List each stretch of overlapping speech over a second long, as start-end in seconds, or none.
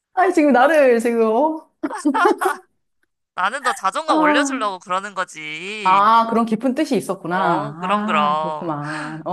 7.3-8.7